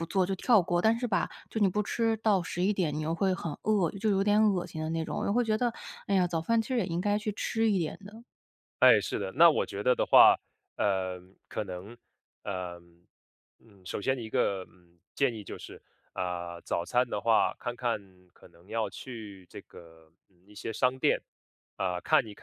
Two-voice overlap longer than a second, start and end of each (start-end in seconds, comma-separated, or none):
none